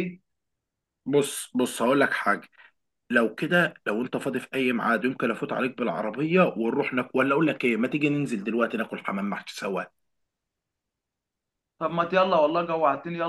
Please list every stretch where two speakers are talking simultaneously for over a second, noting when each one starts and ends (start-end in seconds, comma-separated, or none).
none